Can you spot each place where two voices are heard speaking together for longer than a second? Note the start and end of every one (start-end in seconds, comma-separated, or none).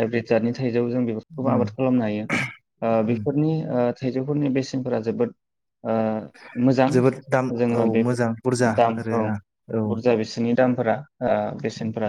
none